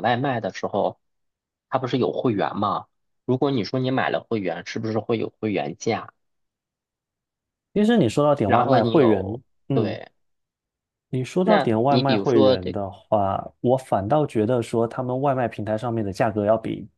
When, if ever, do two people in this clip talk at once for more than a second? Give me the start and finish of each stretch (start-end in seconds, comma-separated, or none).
8.4-10.0, 11.4-12.8